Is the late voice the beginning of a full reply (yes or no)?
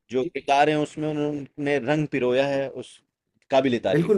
yes